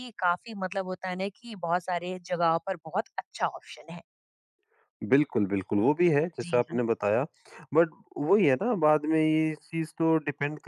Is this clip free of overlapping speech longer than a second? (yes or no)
yes